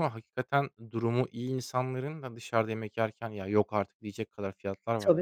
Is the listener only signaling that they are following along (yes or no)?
no